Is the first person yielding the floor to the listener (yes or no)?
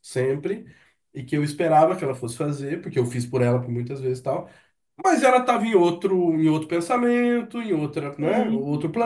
no